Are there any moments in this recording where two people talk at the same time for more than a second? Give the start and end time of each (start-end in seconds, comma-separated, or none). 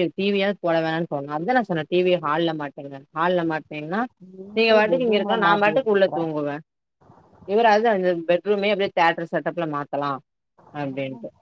4.6-6.2